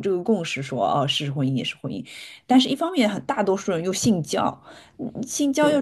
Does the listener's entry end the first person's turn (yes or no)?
no